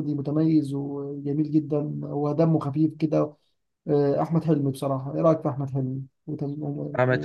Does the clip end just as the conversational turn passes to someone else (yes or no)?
yes